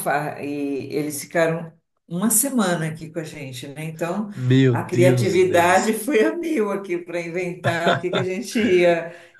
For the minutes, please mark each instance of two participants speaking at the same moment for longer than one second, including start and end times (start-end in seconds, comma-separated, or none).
4.7-5.9